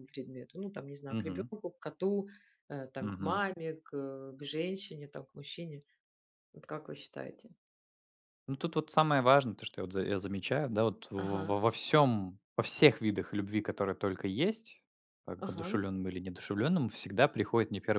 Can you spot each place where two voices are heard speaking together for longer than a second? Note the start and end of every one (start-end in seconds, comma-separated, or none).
none